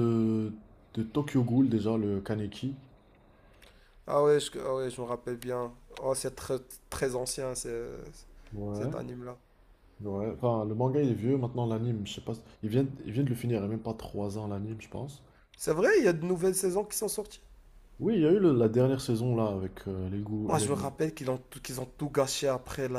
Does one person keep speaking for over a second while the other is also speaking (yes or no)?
no